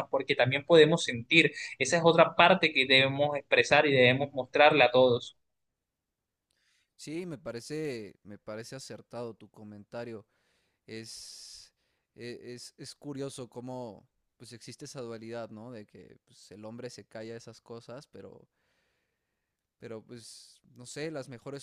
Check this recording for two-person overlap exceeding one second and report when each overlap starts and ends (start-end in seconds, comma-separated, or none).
none